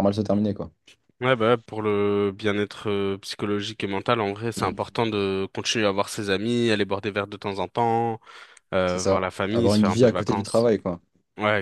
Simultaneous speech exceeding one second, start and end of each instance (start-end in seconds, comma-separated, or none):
8.8-10.7